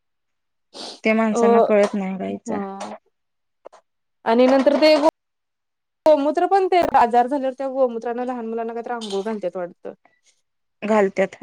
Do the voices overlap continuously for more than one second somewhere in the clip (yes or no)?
no